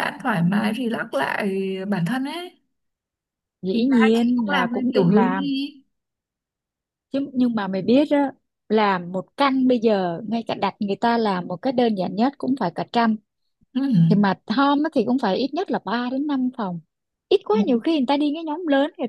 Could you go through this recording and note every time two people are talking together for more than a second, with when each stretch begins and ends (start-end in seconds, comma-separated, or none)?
3.7-5.5